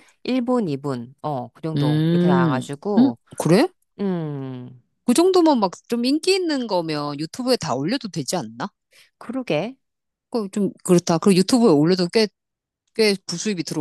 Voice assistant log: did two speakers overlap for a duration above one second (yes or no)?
yes